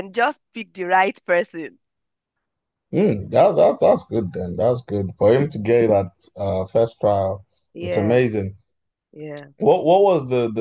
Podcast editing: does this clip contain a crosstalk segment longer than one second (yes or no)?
no